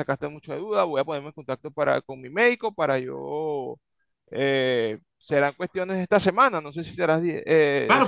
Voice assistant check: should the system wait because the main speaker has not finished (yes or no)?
no